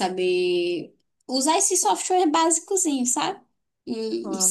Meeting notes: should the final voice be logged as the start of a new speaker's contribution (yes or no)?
no